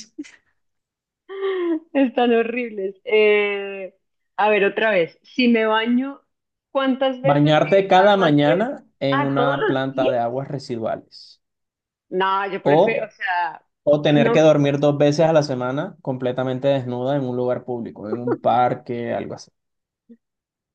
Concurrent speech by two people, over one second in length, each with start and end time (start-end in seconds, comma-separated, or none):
7.2-10.1